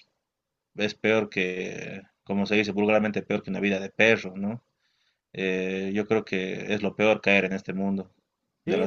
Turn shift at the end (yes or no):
yes